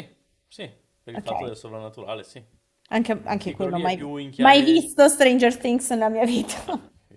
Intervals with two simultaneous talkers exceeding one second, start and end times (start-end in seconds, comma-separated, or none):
3.4-4.9